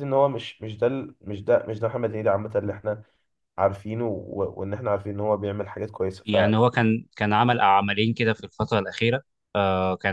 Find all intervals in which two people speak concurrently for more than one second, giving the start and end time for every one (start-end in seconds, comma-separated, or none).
none